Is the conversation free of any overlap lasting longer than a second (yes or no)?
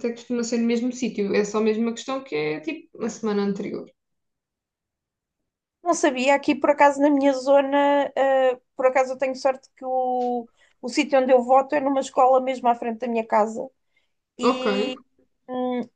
yes